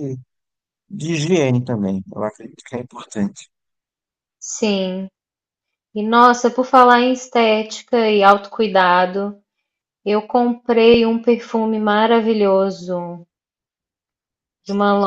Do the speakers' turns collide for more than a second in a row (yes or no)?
no